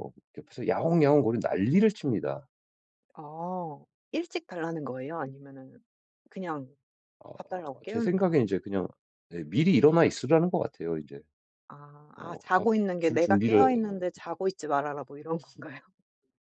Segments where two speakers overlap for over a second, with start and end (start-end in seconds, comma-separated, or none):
12.2-14.0